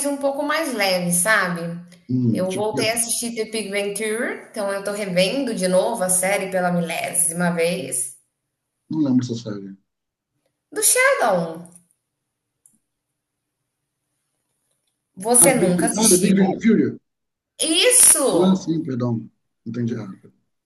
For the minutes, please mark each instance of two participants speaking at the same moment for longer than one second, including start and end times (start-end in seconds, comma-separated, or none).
15.4-16.6